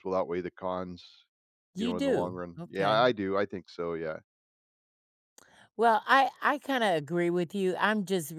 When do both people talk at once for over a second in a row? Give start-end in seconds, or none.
1.8-3.1